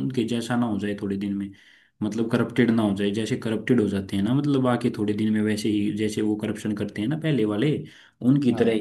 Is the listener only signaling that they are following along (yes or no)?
yes